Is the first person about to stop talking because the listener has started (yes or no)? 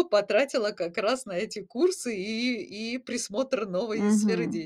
yes